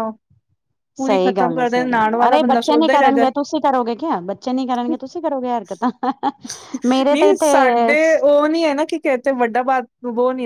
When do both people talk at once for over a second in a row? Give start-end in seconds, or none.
1.1-3.2